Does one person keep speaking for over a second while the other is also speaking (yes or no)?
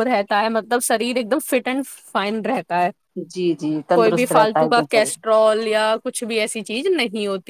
yes